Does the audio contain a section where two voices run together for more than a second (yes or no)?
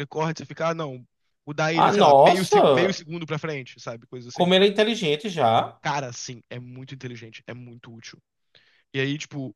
yes